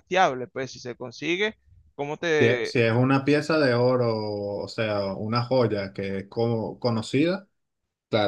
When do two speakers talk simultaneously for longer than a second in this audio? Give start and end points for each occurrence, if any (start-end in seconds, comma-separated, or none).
none